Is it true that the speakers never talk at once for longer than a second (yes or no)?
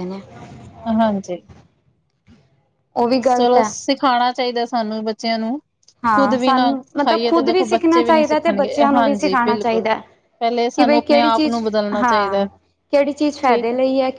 no